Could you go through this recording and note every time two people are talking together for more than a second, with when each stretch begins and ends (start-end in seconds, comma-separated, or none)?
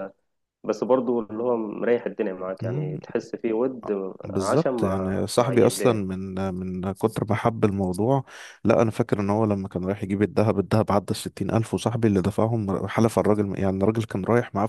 4.2-6.0